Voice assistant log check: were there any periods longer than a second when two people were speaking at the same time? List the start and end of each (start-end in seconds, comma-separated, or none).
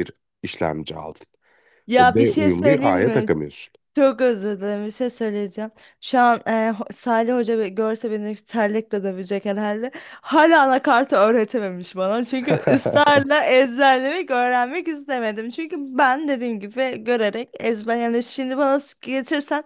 2.0-3.3